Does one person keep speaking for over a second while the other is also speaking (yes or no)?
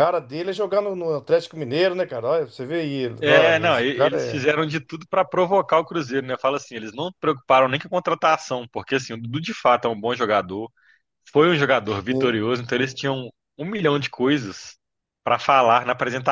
yes